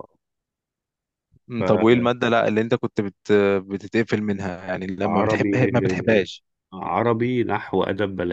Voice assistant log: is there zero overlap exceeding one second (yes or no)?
yes